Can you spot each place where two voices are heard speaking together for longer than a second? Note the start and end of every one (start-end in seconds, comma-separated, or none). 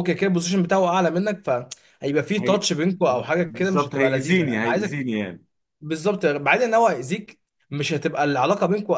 3.4-5.0